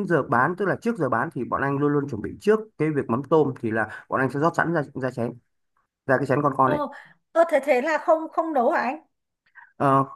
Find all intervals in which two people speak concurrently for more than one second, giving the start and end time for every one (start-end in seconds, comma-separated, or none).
none